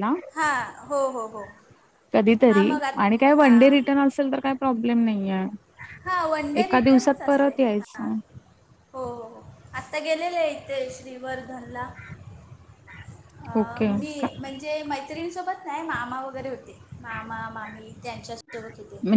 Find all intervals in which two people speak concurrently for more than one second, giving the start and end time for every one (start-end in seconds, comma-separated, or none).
6.6-8.1